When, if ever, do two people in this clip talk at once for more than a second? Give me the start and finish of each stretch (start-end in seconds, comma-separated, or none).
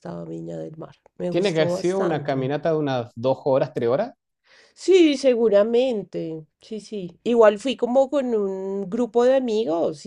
1.3-2.5